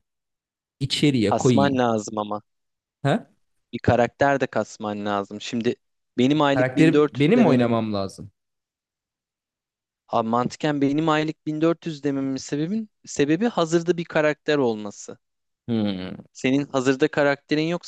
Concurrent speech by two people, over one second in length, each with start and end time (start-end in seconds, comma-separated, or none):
6.5-7.8